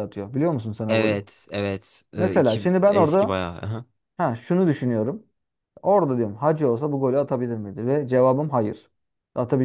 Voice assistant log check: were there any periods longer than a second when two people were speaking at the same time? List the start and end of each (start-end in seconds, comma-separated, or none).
2.1-3.4